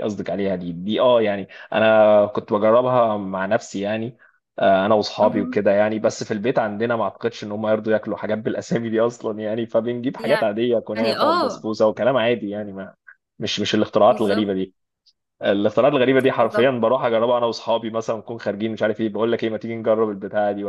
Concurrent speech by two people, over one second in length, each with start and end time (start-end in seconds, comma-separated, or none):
10.2-11.7